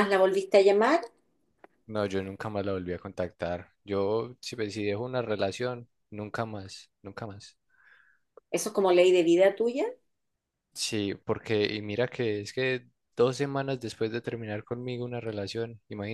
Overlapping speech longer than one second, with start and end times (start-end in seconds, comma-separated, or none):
none